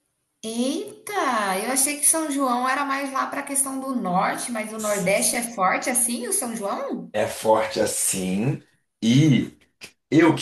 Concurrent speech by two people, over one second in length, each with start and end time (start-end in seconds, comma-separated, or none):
none